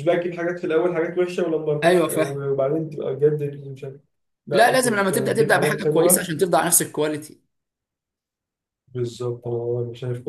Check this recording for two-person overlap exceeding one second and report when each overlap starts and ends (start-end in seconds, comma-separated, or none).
4.5-6.2